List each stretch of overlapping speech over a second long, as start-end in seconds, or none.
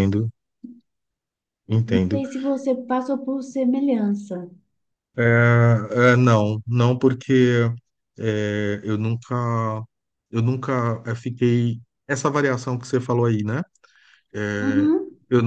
none